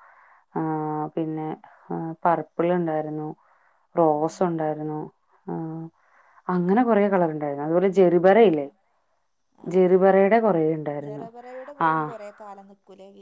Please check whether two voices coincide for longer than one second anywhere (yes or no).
no